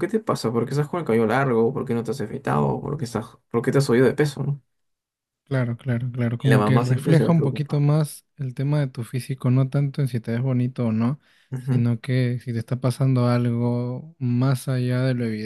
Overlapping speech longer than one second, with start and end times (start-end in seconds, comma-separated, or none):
6.4-7.8